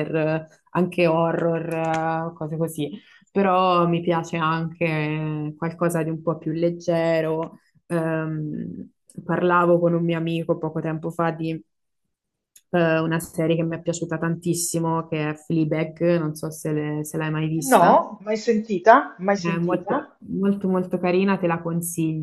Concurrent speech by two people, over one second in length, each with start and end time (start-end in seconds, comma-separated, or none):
none